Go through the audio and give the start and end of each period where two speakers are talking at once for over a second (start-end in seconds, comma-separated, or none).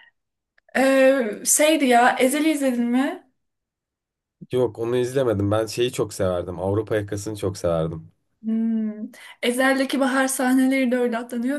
none